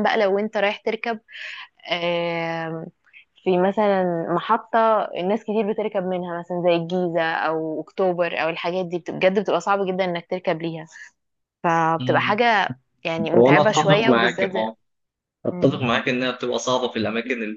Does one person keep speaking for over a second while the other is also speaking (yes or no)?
yes